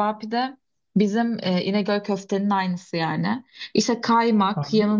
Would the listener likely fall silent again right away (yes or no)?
yes